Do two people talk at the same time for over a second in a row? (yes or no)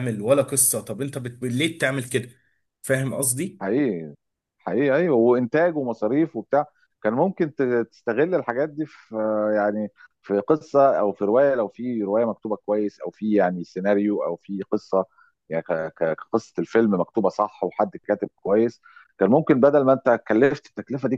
no